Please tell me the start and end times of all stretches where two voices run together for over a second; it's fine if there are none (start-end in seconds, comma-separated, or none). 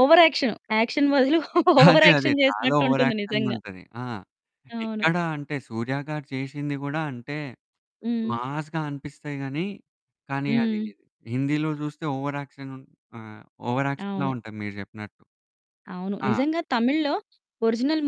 1.9-3.6